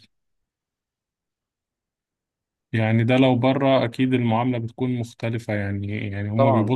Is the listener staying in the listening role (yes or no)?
yes